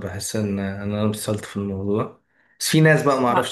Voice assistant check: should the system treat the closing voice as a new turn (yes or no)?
no